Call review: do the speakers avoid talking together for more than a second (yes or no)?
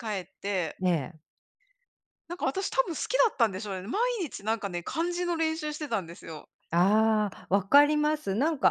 yes